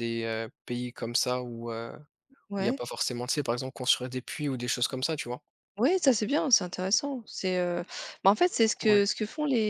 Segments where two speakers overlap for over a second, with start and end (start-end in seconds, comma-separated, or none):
none